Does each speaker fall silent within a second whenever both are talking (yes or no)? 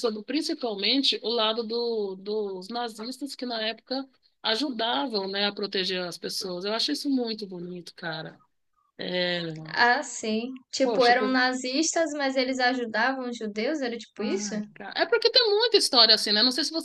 yes